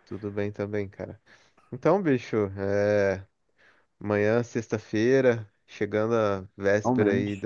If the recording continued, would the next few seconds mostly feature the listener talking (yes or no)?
no